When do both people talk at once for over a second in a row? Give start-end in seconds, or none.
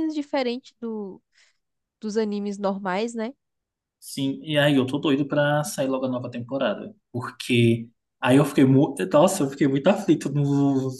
none